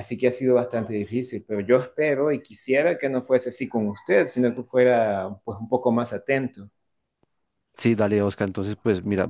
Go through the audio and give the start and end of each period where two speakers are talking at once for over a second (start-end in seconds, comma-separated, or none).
none